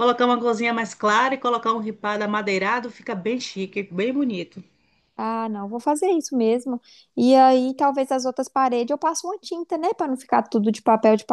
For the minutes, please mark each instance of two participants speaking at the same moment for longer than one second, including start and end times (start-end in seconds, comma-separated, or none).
none